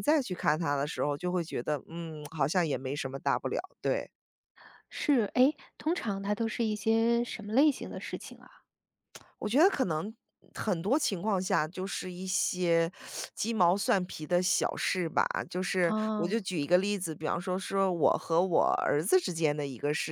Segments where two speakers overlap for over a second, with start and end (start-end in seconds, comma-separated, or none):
none